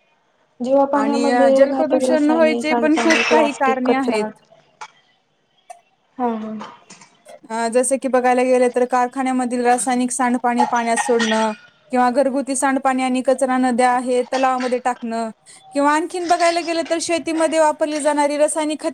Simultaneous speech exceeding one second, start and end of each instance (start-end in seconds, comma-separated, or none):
1.0-4.2